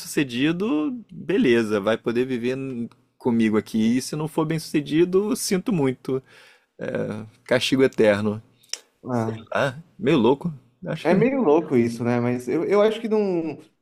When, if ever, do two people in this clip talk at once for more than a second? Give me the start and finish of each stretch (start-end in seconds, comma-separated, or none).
none